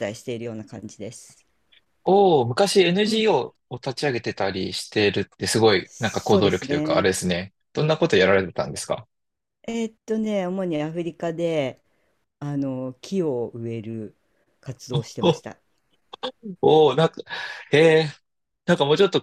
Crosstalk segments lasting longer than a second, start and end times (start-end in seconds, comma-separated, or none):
5.8-7.1